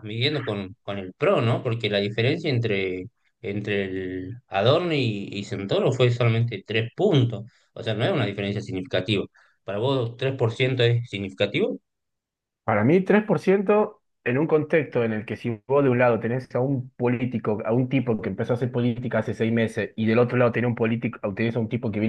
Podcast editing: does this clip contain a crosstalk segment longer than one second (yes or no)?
no